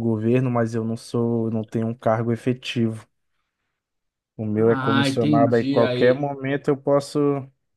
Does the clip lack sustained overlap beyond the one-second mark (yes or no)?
no